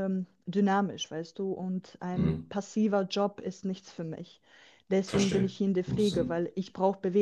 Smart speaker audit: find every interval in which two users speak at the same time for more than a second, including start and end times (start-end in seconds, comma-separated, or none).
5.0-6.5